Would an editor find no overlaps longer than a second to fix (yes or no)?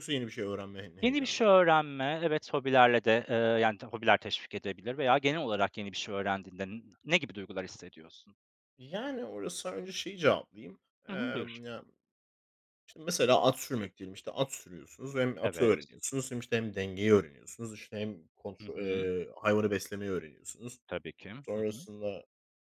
yes